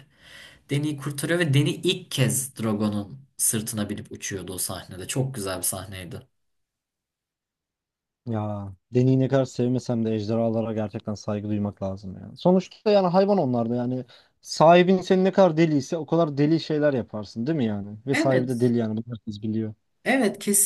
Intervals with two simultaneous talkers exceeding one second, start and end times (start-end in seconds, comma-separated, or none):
none